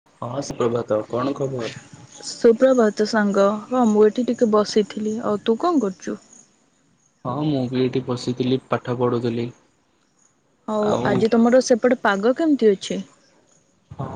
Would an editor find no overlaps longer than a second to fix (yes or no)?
yes